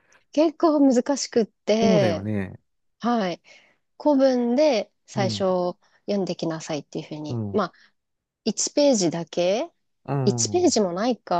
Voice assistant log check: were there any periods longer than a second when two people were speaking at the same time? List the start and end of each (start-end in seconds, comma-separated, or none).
none